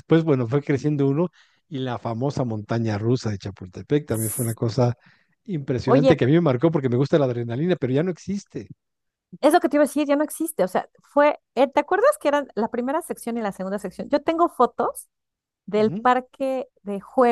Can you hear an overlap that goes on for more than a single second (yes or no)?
no